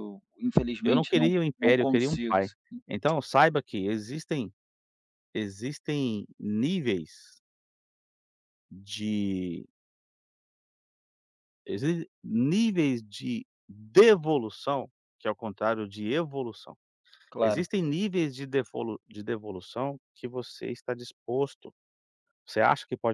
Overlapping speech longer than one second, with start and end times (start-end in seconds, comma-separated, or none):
0.8-2.4